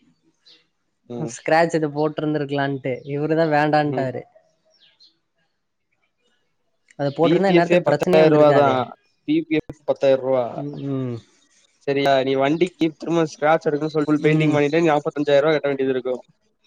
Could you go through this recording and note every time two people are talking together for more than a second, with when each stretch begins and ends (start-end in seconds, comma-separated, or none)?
7.2-8.7